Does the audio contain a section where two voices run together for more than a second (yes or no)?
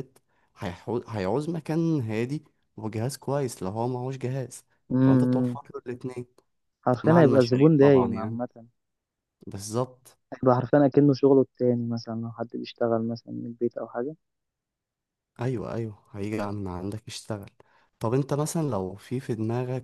yes